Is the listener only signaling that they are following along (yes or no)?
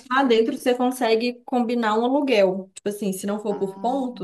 yes